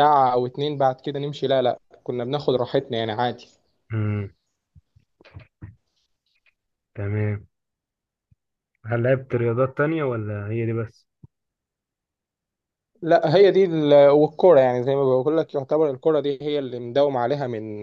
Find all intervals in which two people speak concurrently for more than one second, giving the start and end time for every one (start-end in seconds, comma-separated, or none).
none